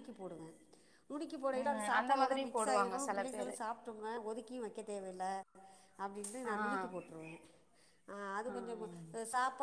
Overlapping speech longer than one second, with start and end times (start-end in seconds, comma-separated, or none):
1.6-3.5